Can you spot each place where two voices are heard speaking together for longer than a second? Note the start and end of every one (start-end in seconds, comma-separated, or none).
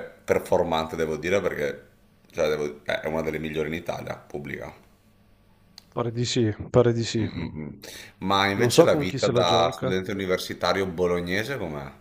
8.6-9.9